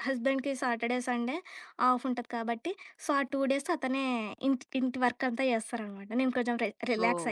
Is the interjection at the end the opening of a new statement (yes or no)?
no